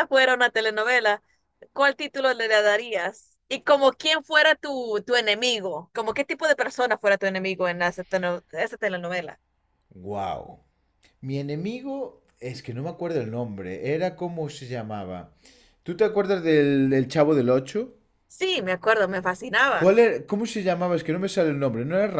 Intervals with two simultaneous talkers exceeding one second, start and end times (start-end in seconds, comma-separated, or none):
none